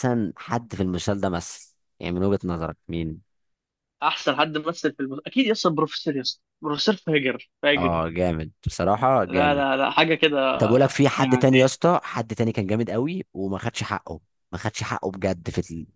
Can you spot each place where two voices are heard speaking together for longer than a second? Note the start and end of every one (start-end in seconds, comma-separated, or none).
none